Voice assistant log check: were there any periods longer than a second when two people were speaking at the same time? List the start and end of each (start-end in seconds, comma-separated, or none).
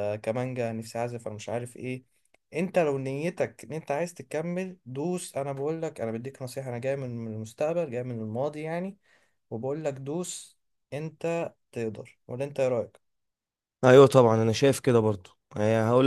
none